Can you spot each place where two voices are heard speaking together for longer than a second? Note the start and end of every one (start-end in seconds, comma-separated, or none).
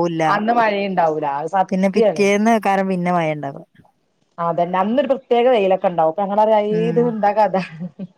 none